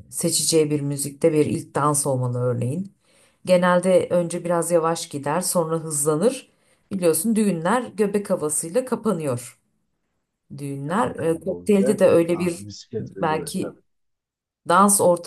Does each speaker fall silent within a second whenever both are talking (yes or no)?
no